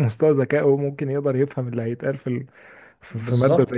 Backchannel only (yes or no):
no